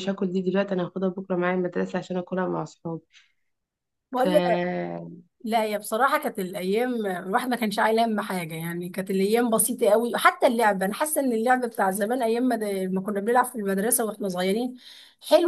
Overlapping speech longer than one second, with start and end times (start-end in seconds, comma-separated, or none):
none